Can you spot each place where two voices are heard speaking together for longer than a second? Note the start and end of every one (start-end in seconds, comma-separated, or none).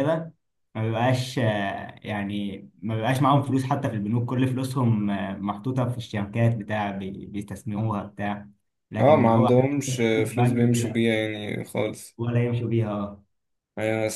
9.0-11.0